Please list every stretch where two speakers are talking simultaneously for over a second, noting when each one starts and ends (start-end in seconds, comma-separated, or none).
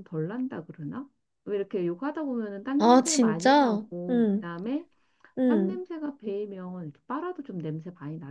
2.8-4.5